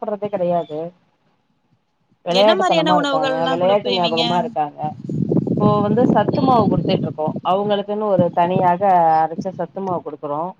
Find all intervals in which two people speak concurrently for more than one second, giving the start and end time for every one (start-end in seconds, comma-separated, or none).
2.4-4.2